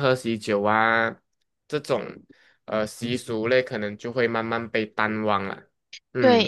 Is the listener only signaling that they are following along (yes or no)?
no